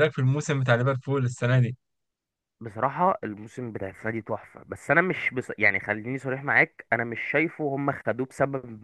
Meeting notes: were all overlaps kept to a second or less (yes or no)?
yes